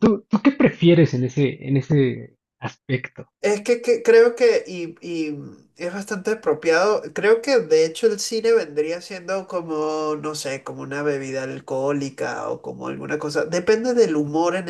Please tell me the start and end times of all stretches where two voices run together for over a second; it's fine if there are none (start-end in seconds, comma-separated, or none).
none